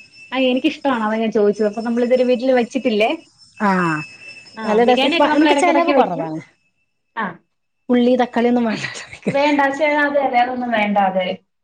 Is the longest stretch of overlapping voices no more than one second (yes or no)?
no